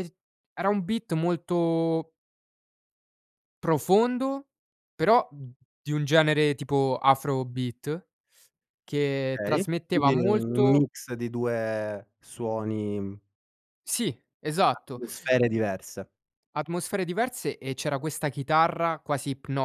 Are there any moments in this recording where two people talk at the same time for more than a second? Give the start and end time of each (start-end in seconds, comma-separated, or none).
9.4-10.8